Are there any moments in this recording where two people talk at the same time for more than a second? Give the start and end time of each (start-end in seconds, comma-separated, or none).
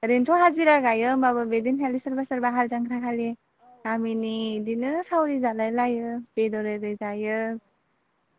4.0-6.0